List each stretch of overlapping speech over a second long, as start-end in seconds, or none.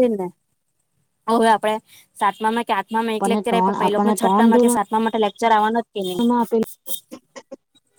3.1-4.9